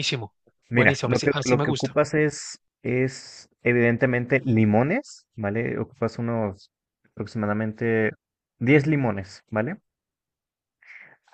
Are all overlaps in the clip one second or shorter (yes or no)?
no